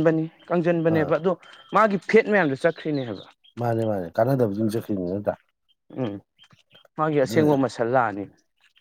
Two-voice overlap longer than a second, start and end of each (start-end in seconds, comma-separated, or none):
none